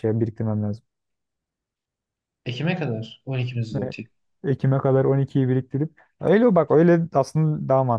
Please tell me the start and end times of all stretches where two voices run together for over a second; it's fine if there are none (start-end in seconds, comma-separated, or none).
none